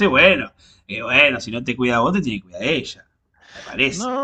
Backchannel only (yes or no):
no